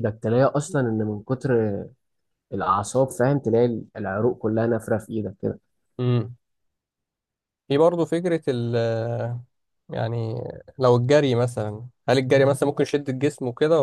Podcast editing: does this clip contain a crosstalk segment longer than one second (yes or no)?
no